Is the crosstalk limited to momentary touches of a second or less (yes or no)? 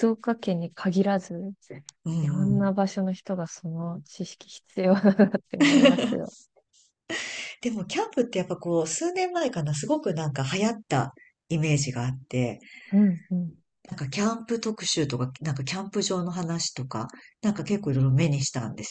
yes